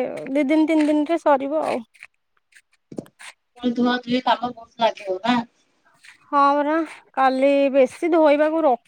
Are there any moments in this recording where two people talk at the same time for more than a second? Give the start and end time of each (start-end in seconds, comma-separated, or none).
none